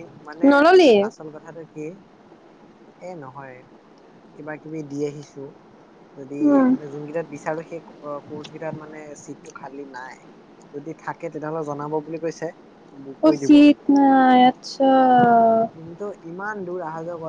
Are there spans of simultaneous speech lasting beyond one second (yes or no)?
no